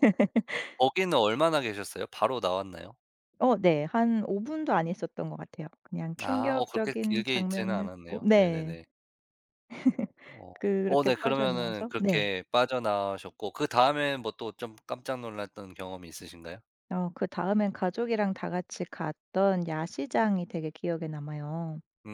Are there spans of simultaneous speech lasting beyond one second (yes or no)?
yes